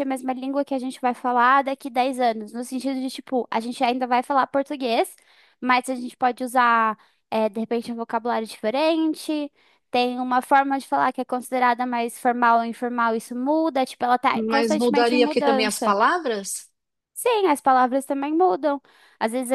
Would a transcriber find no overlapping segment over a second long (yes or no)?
no